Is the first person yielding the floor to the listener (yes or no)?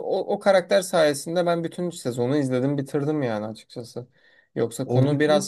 no